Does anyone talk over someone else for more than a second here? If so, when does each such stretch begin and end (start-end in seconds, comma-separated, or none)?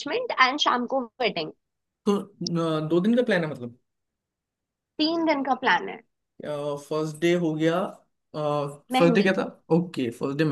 none